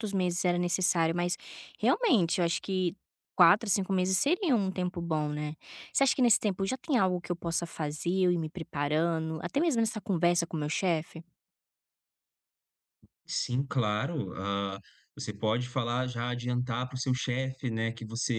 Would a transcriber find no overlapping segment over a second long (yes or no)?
yes